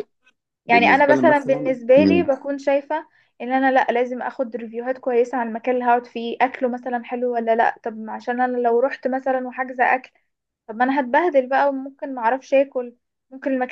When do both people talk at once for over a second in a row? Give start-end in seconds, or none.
0.7-2.3